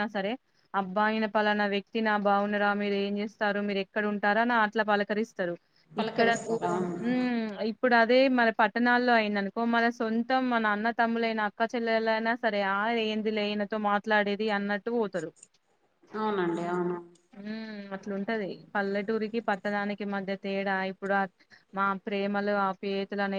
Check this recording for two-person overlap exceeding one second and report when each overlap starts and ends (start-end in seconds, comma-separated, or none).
none